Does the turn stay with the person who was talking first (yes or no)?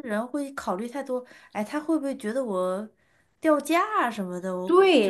no